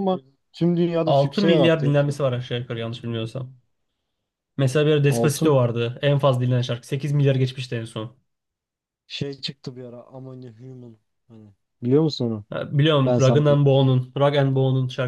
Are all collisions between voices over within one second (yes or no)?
no